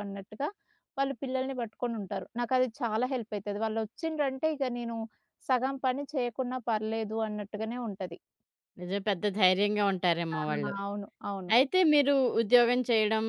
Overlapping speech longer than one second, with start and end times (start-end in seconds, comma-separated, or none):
none